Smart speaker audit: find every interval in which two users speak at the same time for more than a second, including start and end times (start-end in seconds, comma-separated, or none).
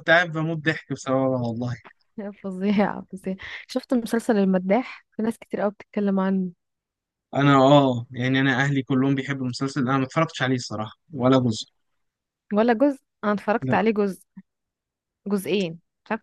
none